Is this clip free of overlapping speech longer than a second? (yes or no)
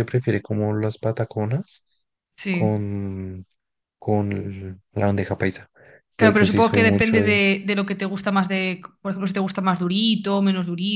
no